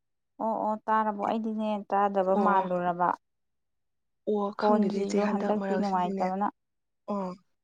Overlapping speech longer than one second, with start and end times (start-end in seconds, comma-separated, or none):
4.6-6.2